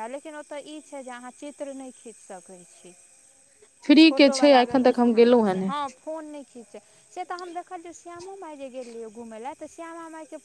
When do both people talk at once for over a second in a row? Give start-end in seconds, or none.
4.1-5.7